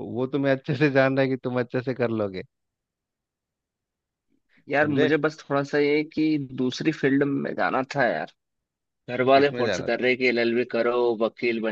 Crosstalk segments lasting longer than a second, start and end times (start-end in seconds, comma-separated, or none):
none